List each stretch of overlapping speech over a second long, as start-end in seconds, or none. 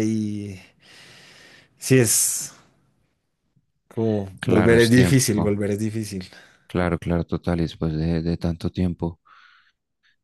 4.4-5.6